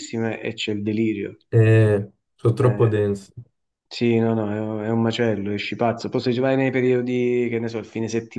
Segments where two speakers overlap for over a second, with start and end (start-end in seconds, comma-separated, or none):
none